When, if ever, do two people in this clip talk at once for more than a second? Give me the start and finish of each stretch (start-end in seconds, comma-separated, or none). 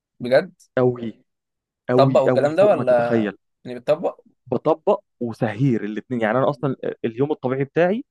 1.9-3.2